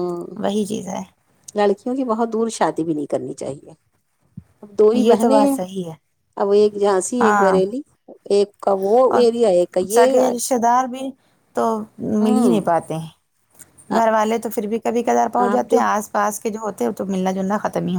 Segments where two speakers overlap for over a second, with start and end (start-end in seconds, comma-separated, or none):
none